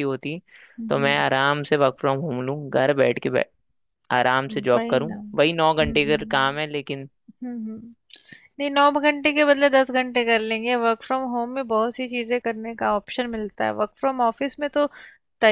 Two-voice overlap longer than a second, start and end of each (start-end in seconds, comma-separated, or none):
4.5-6.2